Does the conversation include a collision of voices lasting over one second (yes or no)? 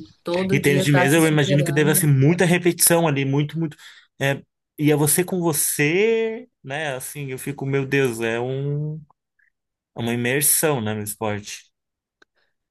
yes